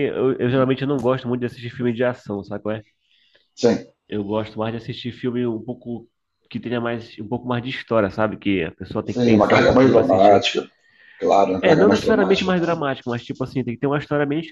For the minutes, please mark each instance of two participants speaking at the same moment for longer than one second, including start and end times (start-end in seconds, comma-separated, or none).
9.1-10.5, 11.6-12.8